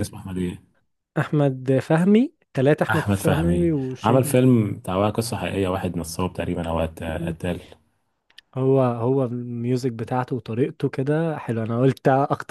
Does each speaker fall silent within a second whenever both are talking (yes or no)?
no